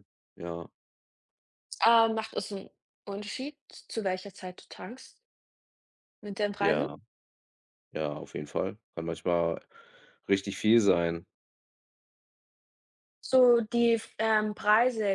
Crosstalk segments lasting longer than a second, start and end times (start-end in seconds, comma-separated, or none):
none